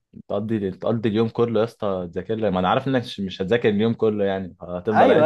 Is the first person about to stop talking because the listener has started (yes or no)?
yes